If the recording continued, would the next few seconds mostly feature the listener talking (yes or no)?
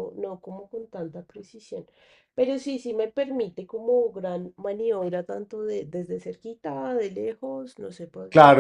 yes